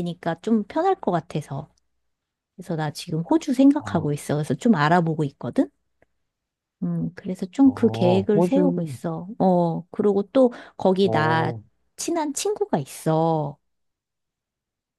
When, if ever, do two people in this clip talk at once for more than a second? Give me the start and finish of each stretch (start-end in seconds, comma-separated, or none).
7.6-9.0